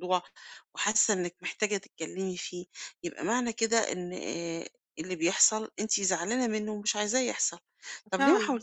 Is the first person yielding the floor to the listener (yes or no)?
no